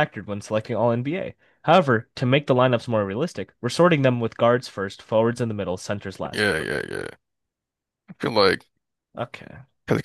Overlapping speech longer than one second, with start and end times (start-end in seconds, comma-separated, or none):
none